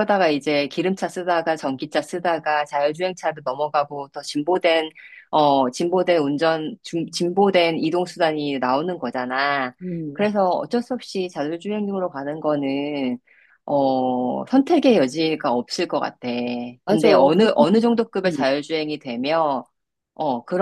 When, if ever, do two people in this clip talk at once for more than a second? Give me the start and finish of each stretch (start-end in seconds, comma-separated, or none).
16.9-18.4